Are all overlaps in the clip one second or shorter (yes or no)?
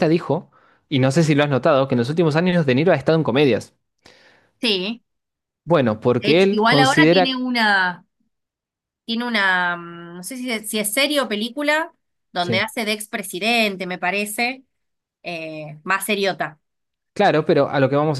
no